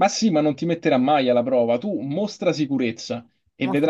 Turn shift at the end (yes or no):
no